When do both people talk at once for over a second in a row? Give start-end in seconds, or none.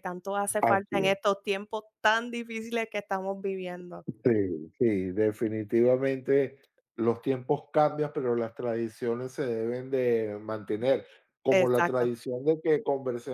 none